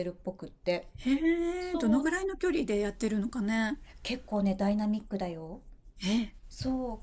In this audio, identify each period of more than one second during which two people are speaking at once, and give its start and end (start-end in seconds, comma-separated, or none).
none